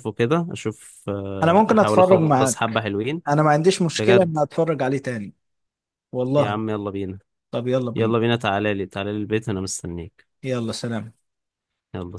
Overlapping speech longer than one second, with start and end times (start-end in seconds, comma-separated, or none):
1.4-2.8